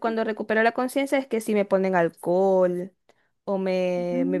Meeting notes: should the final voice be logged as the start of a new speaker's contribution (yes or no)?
no